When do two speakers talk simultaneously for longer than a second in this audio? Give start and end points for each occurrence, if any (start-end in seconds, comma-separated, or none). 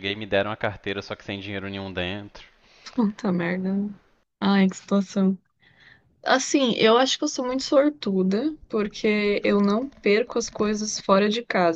none